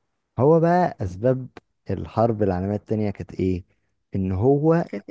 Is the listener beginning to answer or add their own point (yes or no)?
no